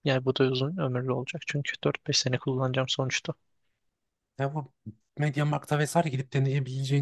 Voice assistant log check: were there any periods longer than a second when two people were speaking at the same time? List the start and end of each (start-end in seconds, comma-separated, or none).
none